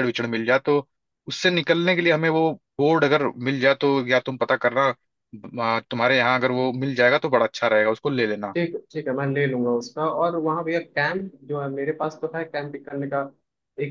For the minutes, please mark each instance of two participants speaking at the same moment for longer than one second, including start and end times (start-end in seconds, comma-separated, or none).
none